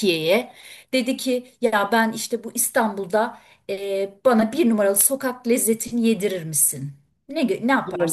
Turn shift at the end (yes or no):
yes